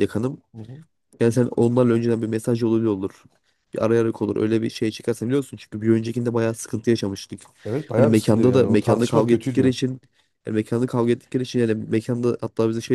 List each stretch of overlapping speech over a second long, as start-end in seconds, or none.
8.0-9.7